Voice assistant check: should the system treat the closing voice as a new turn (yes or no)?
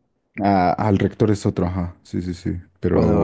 yes